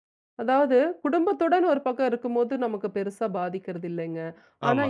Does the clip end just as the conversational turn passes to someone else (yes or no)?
no